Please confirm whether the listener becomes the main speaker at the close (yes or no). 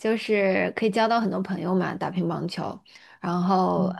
no